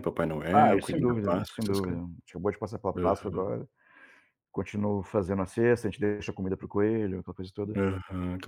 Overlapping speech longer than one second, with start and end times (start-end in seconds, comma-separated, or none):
0.5-1.8